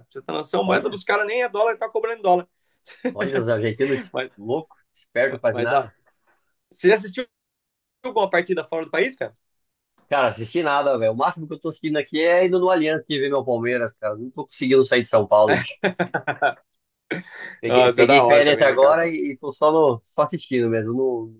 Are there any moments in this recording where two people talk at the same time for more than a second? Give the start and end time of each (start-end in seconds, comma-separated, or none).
17.7-19.0